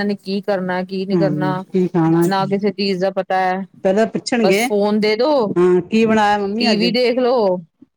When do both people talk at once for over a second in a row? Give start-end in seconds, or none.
none